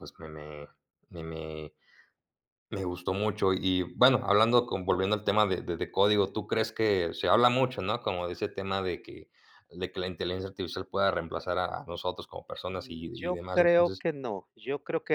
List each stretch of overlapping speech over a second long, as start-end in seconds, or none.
12.7-14.0